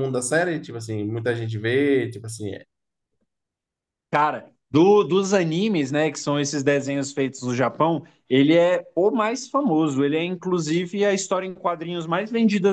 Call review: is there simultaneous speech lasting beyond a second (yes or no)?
no